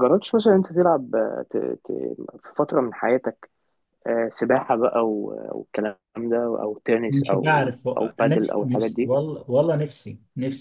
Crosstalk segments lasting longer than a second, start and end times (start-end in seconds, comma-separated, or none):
7.1-9.1